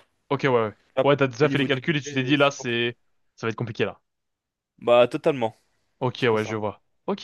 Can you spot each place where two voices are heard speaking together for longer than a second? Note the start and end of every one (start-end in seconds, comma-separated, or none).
1.0-2.9